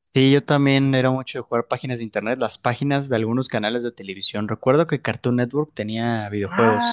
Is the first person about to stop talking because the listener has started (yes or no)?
yes